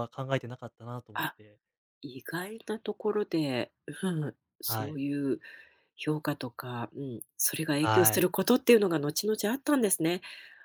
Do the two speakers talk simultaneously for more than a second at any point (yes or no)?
no